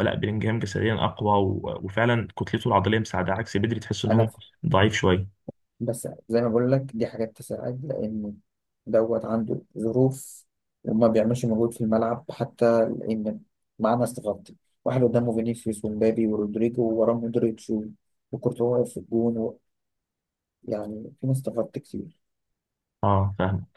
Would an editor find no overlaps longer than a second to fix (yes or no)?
yes